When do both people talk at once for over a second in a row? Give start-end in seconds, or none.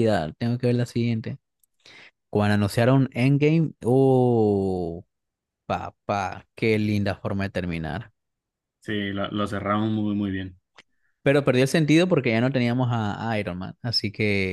none